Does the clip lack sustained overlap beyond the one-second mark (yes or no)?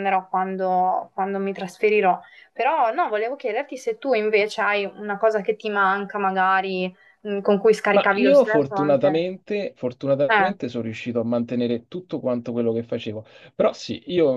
no